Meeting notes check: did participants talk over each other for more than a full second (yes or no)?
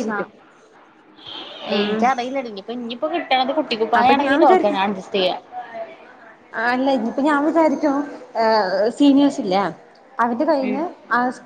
no